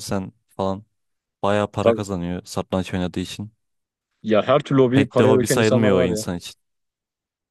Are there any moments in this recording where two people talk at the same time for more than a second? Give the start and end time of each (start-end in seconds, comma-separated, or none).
4.9-6.2